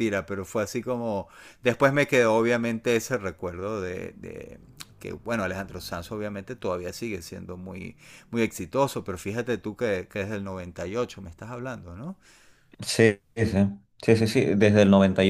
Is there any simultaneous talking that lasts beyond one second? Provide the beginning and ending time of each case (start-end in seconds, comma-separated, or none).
none